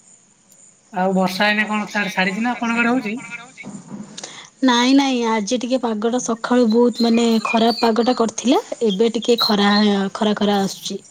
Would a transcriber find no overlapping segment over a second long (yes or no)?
yes